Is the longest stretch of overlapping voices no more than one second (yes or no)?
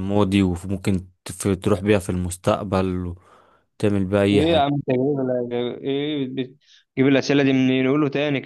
yes